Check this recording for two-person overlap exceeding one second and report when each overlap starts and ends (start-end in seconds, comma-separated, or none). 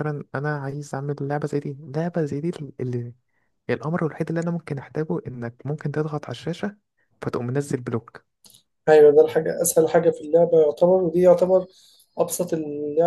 none